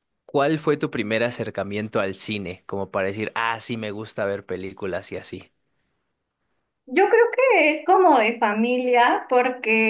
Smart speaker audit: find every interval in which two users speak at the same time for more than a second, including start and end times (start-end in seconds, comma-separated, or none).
none